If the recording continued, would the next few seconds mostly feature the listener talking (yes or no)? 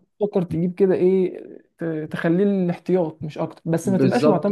yes